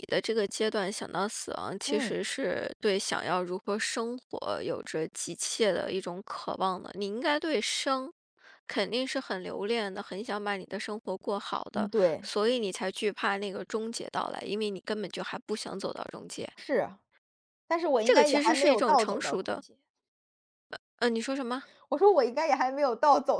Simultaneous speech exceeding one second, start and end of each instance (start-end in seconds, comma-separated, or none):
18.0-19.6